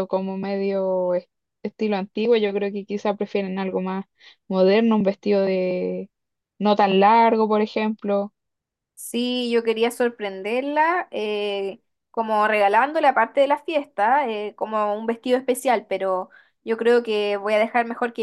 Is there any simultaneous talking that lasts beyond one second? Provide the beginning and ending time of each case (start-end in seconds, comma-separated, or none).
none